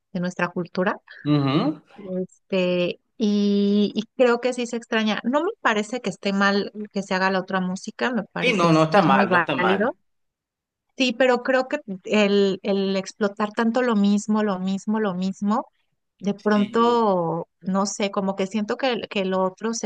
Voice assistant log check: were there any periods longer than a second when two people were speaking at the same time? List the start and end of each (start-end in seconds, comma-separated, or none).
8.4-9.9